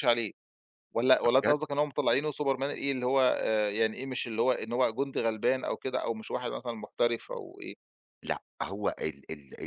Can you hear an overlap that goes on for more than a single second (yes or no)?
no